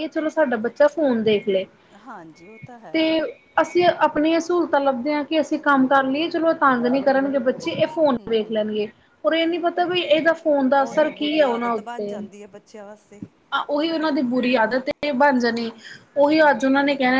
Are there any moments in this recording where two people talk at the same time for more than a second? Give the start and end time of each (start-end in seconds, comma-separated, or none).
10.8-12.2